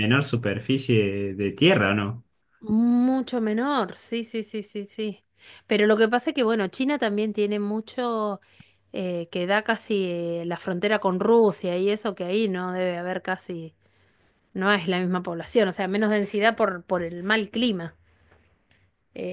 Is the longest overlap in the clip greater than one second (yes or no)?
no